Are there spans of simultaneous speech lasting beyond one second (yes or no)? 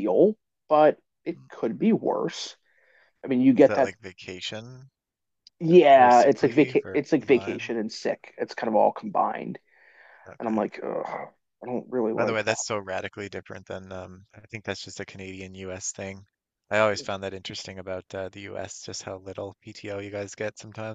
yes